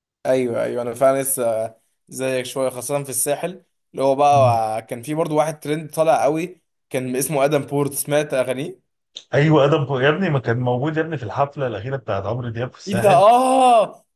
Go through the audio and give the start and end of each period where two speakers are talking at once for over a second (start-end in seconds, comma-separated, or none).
none